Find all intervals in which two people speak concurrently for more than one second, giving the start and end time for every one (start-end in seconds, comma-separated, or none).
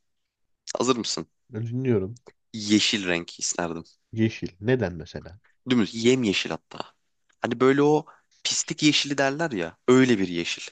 none